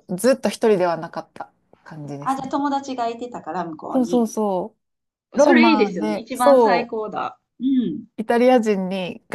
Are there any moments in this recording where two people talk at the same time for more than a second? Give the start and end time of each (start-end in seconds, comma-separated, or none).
5.4-6.9